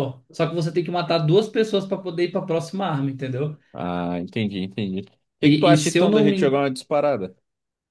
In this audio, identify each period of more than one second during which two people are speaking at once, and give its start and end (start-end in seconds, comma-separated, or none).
5.4-6.6